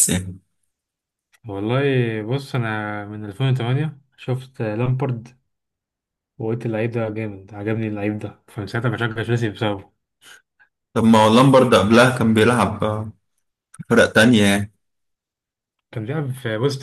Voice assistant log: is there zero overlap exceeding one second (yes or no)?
yes